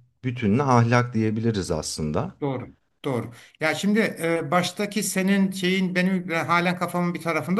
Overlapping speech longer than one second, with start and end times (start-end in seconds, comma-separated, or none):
none